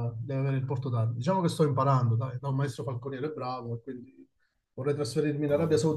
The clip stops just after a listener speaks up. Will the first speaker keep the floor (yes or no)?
yes